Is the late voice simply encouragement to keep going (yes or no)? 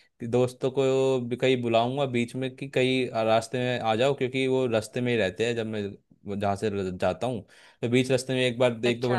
yes